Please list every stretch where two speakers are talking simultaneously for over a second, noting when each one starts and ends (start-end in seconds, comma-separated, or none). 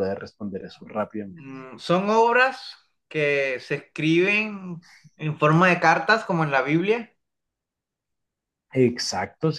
none